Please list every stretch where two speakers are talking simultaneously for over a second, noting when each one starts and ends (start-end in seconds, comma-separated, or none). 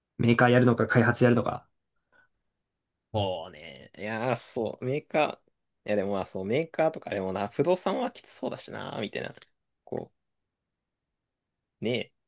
none